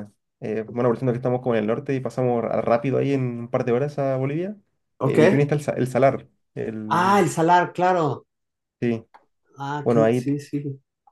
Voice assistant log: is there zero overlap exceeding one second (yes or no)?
yes